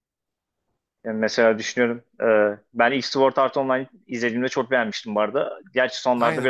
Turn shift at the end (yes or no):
yes